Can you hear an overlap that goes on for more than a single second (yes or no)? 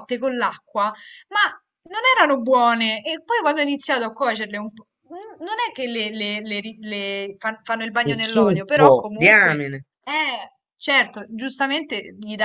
yes